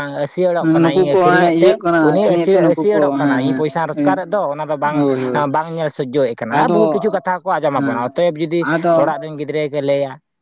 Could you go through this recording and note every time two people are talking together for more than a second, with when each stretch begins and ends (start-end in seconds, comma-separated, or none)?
0.6-4.2